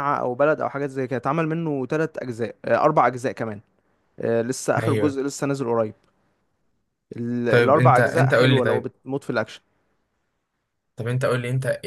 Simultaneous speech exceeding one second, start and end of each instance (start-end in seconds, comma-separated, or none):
7.5-8.9